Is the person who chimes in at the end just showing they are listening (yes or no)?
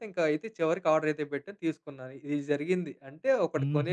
no